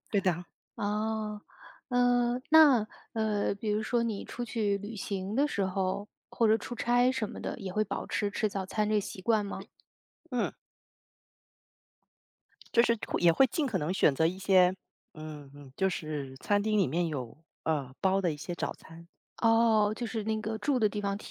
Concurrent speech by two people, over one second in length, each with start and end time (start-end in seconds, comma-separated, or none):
none